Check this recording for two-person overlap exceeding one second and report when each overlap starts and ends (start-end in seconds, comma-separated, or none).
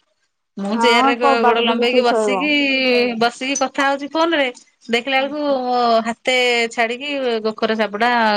0.8-2.4